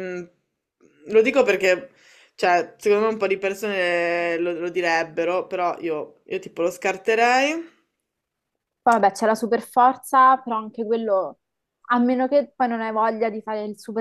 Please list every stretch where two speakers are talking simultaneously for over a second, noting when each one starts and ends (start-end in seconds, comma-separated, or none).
none